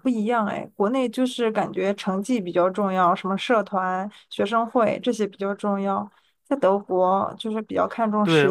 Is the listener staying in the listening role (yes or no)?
no